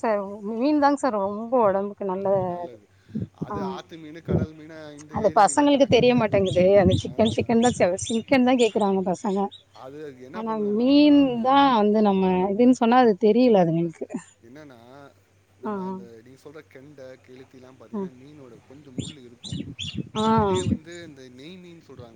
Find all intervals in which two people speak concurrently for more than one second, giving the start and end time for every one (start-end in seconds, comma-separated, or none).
5.2-7.5